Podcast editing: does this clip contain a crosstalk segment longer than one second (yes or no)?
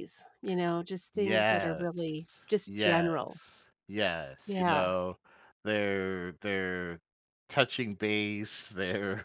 yes